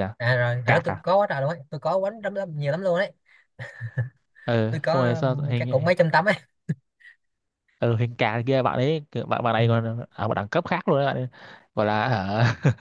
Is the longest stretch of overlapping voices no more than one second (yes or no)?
no